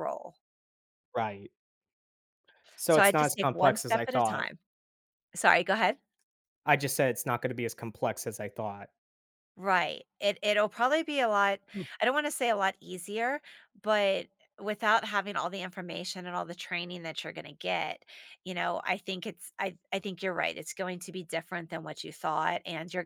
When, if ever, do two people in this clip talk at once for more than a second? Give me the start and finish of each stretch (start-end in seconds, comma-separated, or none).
2.9-4.5